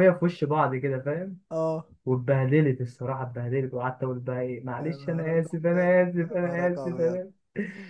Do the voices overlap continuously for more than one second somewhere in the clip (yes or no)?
yes